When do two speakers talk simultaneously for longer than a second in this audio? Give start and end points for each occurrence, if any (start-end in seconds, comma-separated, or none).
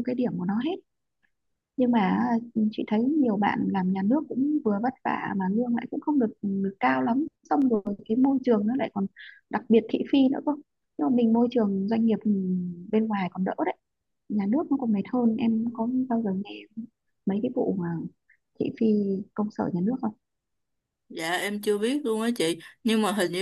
none